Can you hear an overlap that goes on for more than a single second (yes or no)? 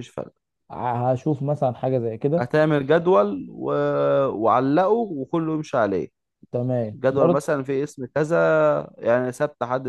no